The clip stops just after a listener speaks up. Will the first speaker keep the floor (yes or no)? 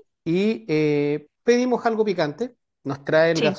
yes